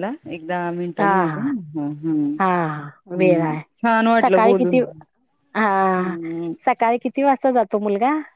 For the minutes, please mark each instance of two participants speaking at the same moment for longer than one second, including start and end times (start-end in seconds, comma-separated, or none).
none